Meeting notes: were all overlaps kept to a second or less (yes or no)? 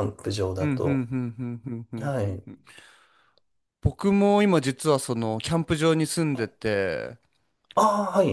yes